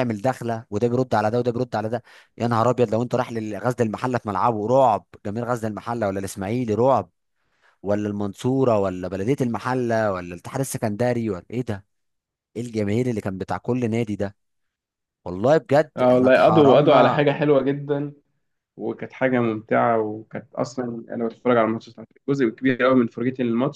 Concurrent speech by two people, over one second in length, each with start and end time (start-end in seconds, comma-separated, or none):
16.0-17.2